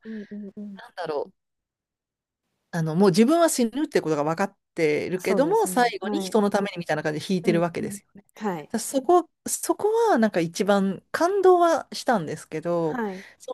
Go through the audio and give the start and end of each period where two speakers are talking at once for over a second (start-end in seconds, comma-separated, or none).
5.2-6.4